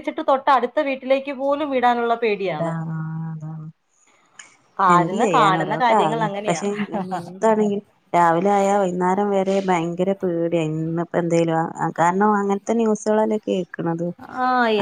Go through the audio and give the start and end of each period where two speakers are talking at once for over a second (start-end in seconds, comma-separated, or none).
4.9-6.6